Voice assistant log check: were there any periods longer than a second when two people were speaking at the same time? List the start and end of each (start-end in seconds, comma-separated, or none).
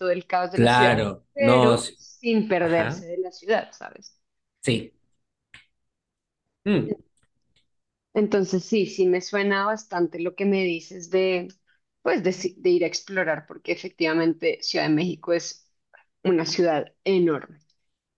0.5-2.0